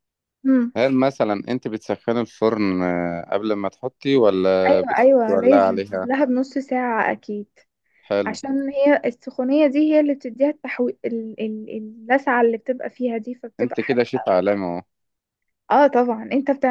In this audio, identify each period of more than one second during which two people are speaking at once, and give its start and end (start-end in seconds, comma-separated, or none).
4.7-6.1